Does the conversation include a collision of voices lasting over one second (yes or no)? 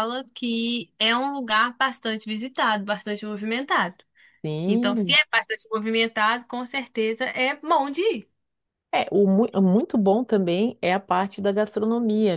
no